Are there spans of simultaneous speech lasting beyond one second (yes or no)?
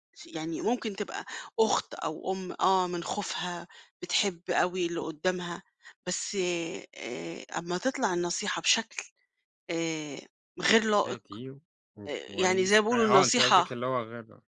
yes